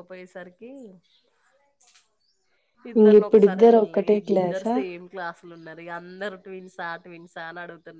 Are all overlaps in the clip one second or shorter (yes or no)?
no